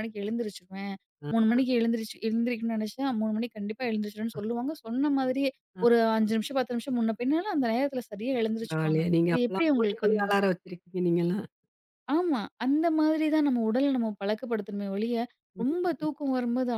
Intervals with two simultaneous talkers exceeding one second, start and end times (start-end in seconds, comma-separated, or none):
8.6-10.4